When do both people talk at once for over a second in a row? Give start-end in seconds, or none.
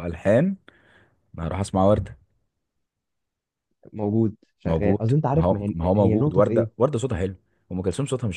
4.7-6.7